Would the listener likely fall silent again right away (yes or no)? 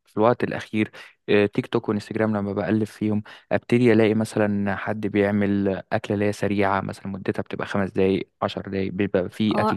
no